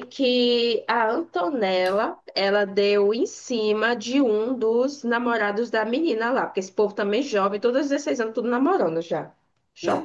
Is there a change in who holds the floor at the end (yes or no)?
yes